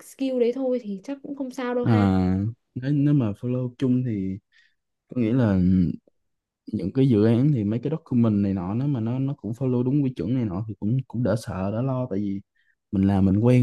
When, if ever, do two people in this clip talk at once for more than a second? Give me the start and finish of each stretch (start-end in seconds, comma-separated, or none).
none